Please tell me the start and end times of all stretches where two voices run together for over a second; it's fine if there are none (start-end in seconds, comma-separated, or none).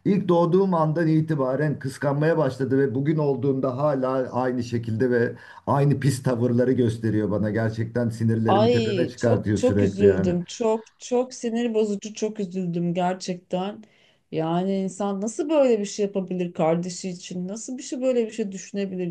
8.5-10.3